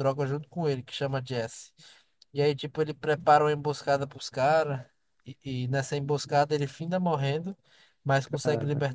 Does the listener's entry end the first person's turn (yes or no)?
no